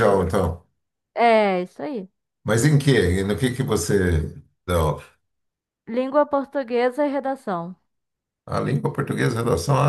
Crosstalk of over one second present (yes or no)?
no